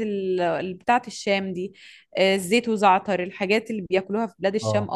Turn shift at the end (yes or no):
yes